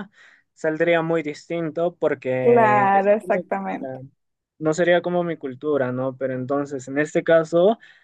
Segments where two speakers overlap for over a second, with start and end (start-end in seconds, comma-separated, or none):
2.4-3.6